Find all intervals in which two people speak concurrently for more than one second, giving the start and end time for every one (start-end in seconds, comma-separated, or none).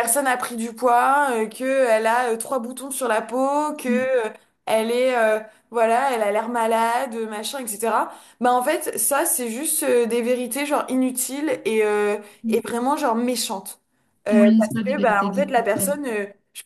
14.3-15.9